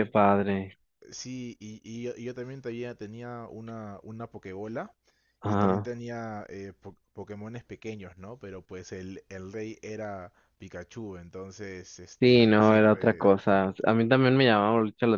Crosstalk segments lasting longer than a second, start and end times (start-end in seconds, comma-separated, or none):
12.2-13.6